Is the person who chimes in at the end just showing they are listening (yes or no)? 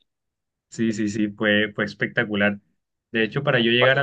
yes